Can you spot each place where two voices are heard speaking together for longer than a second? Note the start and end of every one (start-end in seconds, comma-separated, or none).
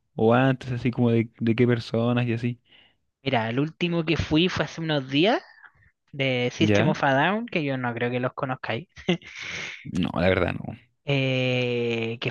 none